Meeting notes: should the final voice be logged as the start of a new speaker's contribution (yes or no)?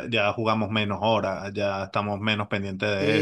yes